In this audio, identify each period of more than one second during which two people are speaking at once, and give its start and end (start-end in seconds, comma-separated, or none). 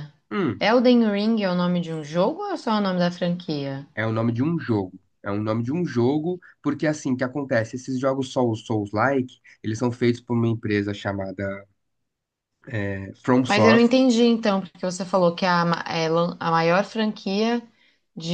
none